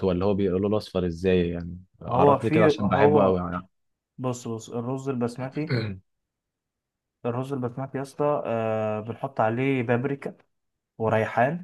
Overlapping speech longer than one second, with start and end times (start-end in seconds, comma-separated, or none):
2.1-3.4